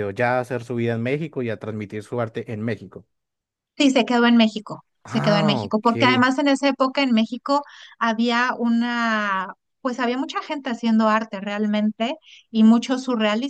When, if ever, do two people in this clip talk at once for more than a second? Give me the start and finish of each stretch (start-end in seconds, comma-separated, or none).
5.0-6.3